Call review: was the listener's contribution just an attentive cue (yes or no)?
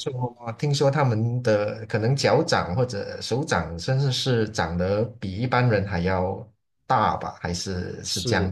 no